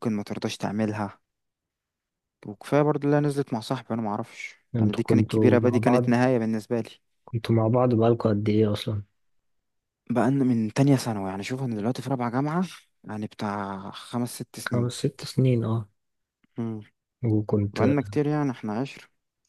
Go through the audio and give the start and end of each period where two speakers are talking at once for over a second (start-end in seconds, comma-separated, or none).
4.8-6.1